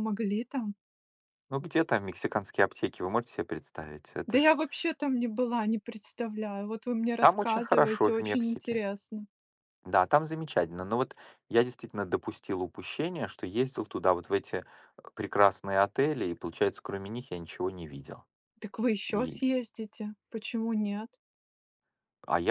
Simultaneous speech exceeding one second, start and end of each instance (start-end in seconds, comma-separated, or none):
7.2-8.8